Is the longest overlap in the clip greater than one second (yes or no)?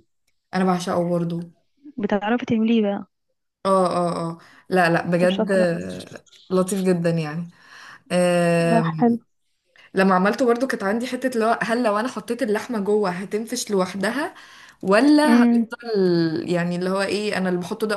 no